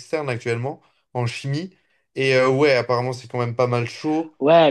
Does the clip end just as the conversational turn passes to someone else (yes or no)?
yes